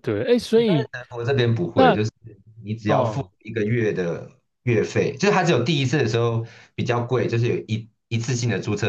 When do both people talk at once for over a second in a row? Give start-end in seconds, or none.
none